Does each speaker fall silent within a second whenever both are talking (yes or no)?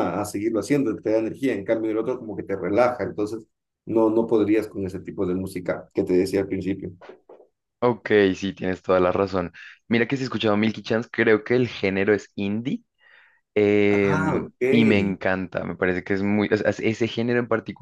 no